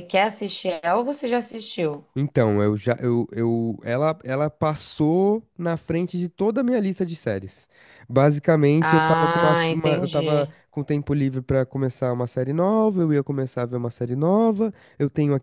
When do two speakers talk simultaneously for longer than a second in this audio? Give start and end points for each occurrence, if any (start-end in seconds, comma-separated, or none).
8.8-10.5